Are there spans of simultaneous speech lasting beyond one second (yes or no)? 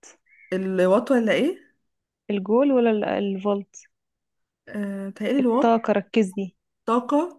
no